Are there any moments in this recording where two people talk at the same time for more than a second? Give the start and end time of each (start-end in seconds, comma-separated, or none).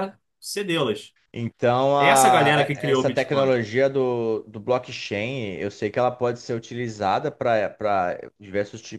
2.0-3.5